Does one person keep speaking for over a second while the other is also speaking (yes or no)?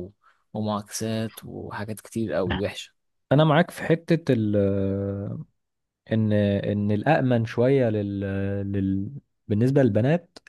no